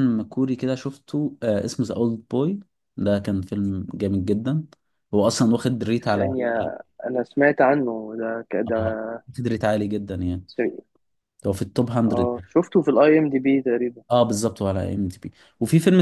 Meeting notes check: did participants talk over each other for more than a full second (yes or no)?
no